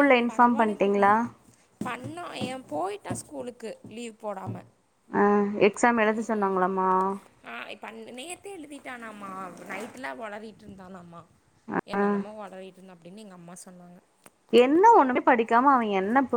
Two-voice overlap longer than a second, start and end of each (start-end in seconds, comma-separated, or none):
none